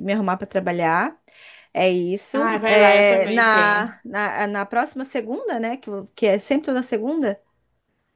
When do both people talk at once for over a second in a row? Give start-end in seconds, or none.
2.3-3.9